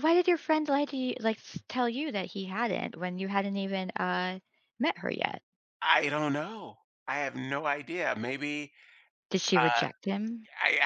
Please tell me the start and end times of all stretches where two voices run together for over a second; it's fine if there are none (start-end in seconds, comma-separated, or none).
none